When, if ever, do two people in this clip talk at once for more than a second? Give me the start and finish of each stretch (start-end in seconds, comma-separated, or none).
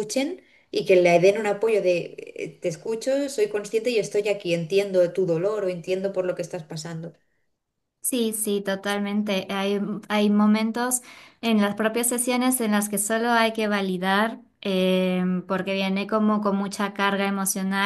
none